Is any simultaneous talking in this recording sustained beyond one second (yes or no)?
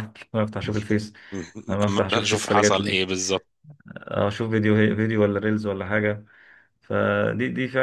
yes